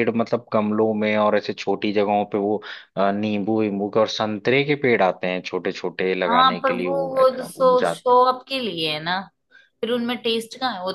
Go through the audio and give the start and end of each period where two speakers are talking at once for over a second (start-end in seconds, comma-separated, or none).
6.3-8.2